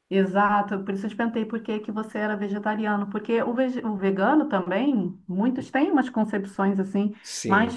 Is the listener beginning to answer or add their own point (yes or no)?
no